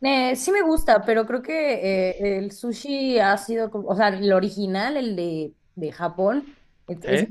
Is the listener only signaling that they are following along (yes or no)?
yes